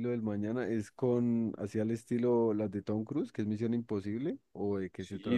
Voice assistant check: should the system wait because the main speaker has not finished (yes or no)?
no